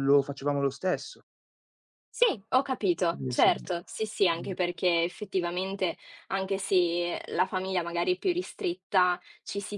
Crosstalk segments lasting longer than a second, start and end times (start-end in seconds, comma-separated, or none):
none